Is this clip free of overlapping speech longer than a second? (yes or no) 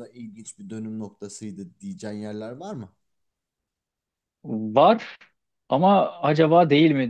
yes